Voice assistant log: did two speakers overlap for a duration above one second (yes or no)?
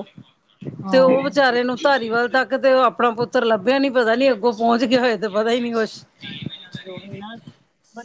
no